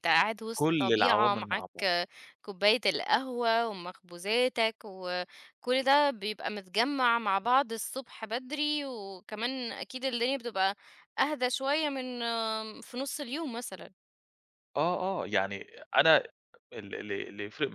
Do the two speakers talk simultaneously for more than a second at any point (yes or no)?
yes